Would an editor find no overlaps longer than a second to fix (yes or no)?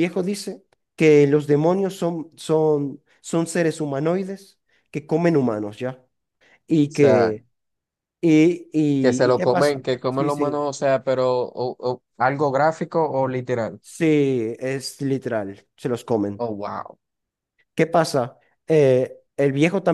no